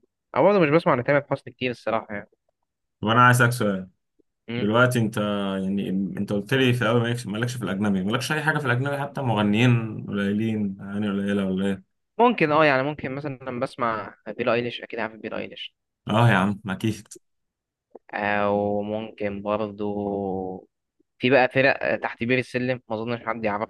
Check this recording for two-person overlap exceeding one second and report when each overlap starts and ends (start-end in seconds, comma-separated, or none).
none